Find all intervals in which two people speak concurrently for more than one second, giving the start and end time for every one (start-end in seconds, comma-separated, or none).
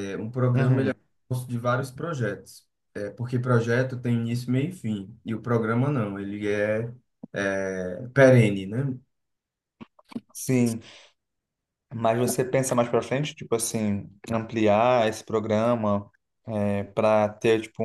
none